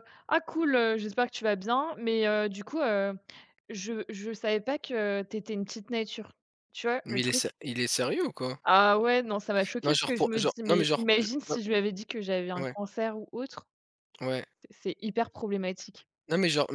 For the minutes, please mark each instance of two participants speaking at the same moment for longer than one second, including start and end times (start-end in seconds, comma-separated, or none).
9.8-11.6